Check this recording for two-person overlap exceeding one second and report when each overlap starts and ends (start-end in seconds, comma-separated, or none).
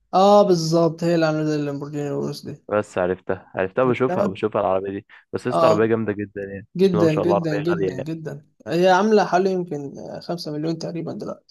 6.8-8.1